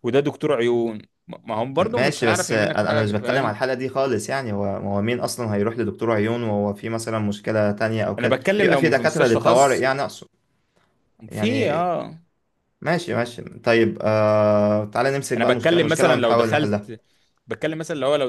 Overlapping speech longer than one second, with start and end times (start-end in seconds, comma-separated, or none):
1.8-3.6, 8.2-9.8, 15.4-16.9